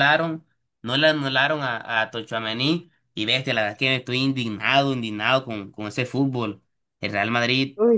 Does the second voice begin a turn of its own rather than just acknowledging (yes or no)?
no